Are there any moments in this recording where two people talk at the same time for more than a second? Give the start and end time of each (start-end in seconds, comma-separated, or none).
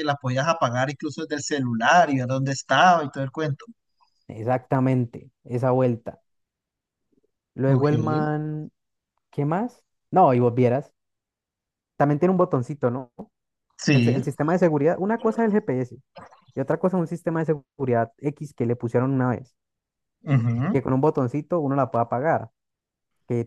none